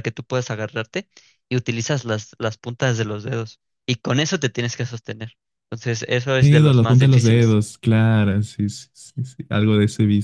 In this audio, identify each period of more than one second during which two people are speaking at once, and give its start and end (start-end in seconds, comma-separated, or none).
6.4-7.6